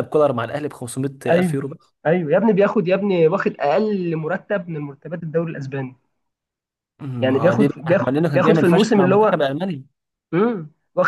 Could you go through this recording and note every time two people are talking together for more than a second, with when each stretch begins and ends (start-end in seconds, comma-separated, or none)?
7.2-9.4